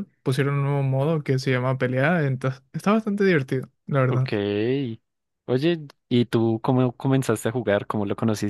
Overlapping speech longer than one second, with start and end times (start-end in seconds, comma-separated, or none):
none